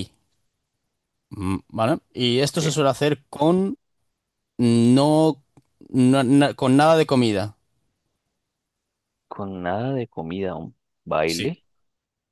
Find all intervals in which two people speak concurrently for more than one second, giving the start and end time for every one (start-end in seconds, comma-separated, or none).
none